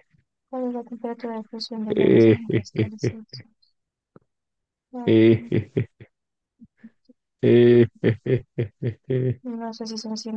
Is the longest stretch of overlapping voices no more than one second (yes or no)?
no